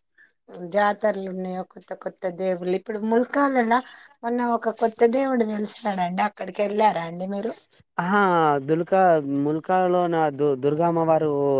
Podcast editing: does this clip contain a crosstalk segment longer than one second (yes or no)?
no